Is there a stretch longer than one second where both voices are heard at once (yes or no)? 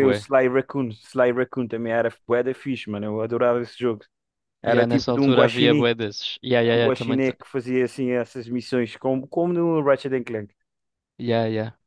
yes